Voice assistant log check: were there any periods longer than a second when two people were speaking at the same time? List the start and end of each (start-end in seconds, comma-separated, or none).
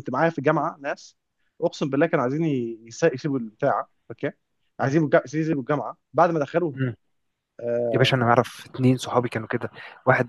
none